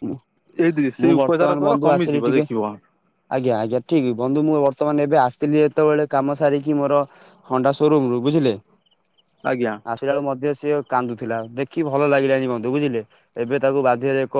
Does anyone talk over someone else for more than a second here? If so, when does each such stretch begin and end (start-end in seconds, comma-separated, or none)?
1.0-2.5